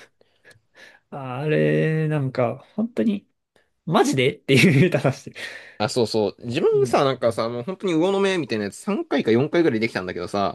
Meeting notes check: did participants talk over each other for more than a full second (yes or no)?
no